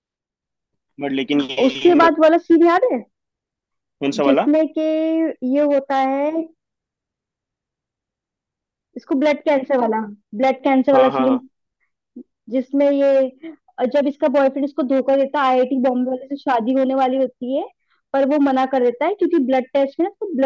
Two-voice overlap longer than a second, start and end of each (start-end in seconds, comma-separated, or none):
none